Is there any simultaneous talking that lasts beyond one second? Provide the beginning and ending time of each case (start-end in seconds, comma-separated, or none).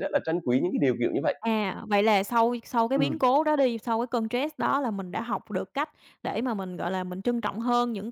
none